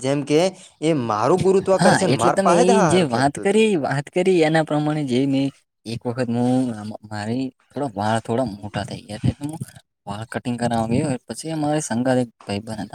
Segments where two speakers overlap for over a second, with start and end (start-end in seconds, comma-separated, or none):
none